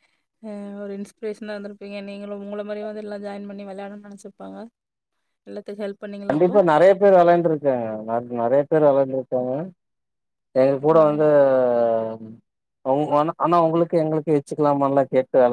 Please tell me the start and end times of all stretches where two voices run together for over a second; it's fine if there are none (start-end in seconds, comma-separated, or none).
none